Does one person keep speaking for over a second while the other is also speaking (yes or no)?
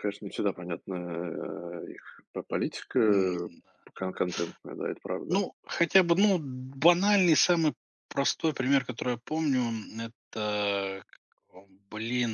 no